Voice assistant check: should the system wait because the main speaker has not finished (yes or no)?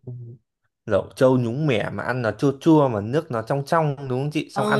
no